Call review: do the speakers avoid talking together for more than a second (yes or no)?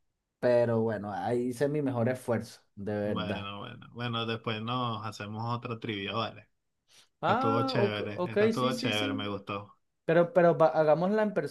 no